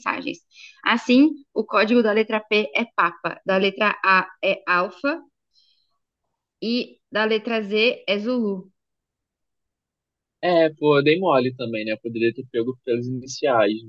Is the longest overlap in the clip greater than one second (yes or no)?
no